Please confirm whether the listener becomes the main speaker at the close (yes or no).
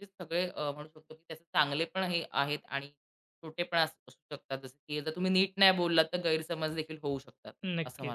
yes